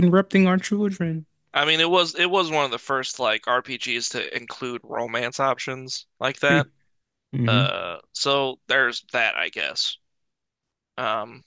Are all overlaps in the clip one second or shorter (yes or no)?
yes